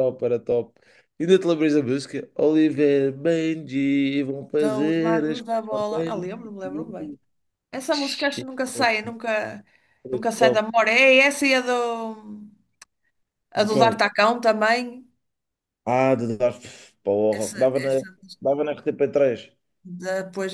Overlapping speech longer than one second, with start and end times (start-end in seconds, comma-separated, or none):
4.6-6.3